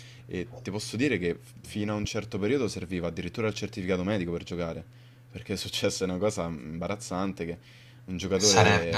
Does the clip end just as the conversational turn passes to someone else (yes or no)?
no